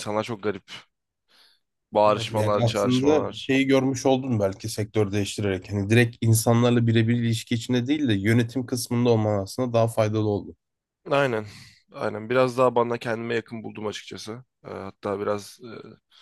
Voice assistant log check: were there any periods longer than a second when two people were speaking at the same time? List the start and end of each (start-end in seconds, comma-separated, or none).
2.0-3.5